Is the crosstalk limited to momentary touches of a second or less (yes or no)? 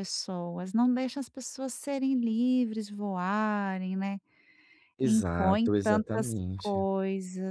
no